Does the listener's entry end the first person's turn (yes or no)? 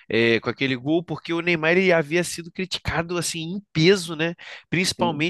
no